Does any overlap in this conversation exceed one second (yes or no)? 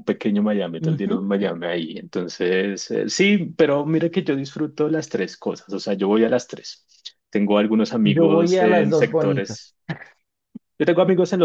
yes